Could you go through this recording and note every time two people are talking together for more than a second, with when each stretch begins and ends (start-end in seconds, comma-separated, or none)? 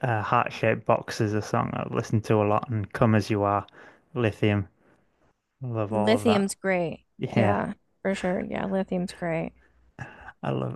none